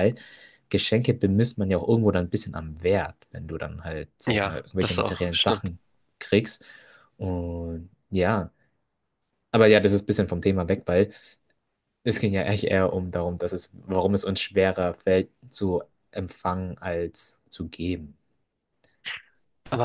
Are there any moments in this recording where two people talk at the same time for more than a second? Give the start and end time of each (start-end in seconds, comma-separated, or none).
4.3-5.7